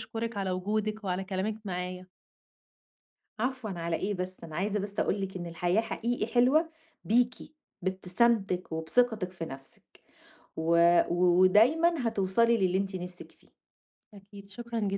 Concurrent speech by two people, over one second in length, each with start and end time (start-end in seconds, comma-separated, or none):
none